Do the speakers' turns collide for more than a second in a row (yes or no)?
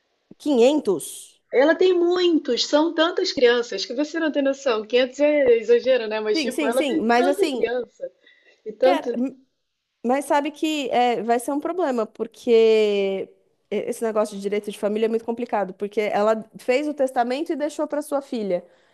yes